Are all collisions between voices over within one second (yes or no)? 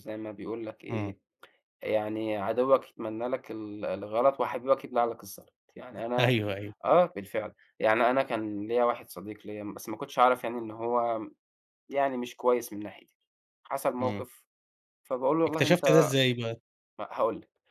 yes